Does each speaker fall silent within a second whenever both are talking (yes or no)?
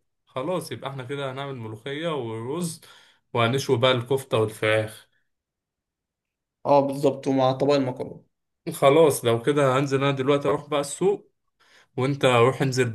yes